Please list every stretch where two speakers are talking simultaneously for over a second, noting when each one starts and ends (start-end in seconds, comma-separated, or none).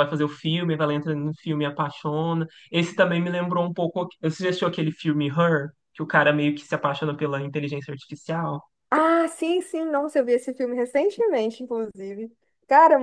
none